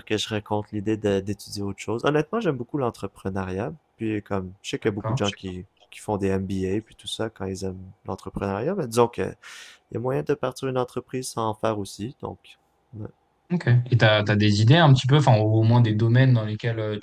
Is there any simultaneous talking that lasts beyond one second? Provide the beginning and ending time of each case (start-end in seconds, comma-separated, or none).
none